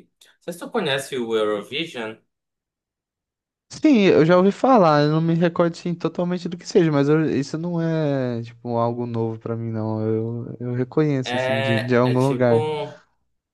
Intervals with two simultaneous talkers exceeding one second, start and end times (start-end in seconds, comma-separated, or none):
11.2-12.6